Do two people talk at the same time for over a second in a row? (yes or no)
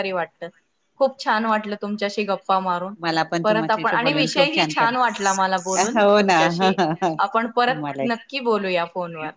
yes